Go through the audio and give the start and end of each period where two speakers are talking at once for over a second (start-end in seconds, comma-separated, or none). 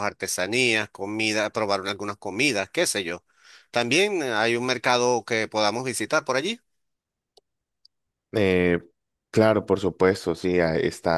none